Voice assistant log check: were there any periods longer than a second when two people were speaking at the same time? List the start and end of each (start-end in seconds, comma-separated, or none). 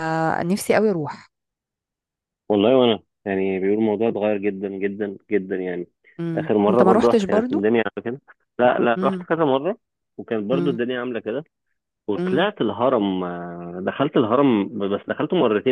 6.3-7.6